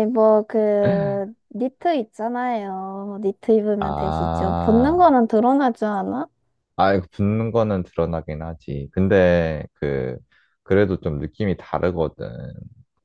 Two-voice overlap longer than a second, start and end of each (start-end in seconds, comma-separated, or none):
3.8-5.0